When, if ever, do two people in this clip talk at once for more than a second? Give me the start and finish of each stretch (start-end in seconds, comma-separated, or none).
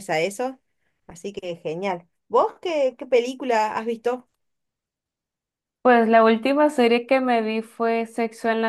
none